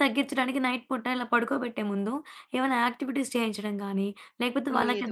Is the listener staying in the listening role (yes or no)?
yes